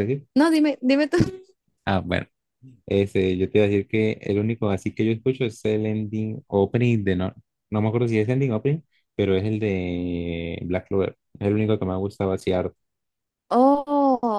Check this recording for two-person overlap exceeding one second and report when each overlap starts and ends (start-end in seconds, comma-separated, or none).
none